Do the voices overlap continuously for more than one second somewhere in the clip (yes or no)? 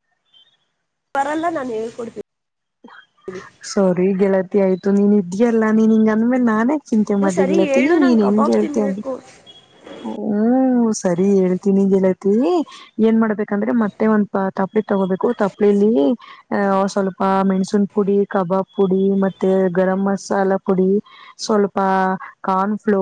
yes